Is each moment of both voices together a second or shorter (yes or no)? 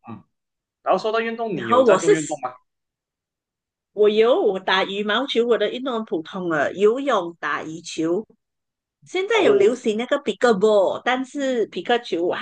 yes